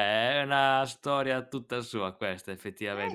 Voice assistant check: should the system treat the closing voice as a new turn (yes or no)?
yes